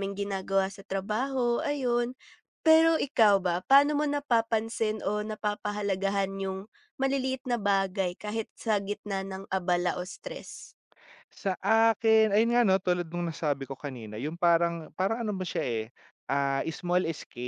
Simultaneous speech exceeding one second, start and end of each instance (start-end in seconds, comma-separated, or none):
none